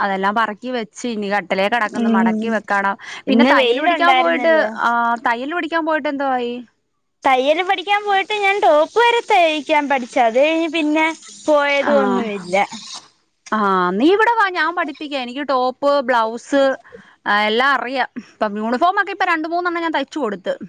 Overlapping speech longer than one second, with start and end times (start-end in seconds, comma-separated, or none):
3.3-4.5